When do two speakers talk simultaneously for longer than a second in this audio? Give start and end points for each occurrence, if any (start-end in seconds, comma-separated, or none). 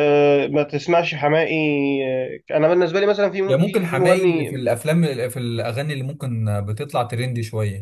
3.5-4.7